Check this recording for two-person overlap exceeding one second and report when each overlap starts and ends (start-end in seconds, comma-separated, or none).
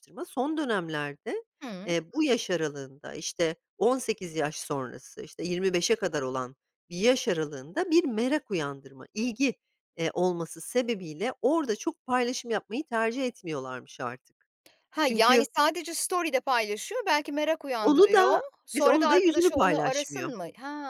17.8-20.3